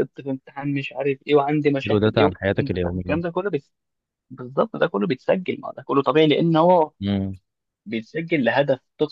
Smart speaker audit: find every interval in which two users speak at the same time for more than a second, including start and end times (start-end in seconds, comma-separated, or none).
1.8-3.2